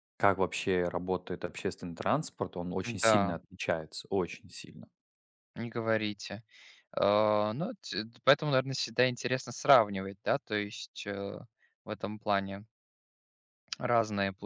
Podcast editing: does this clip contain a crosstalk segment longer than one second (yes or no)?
no